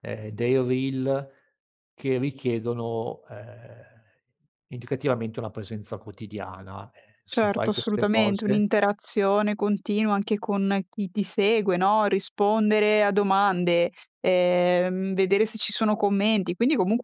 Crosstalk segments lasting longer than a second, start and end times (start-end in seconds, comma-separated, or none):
7.3-8.6